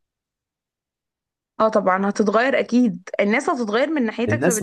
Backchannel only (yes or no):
no